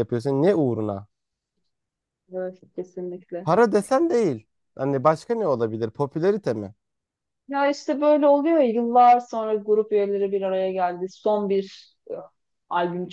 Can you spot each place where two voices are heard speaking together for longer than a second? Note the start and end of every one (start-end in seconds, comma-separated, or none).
none